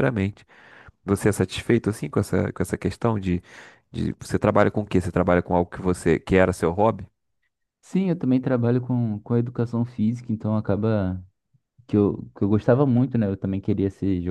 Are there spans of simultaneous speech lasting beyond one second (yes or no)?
no